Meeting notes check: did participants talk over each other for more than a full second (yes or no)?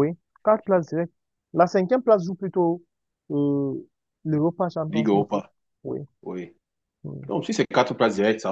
no